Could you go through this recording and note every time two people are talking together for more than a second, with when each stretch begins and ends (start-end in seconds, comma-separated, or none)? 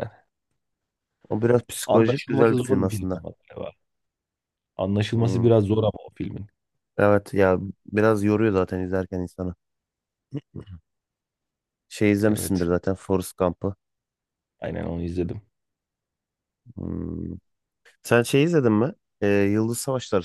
1.9-3.2